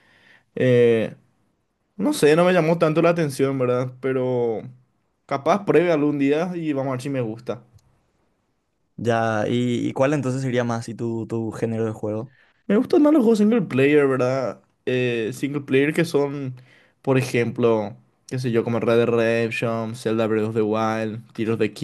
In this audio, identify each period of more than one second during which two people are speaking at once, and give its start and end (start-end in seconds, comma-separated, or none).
none